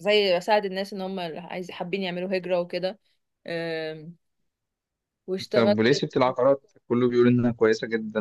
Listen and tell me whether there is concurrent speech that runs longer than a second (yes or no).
no